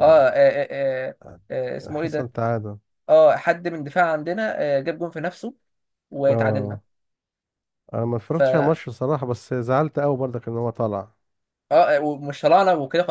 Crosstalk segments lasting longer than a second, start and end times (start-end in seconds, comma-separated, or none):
none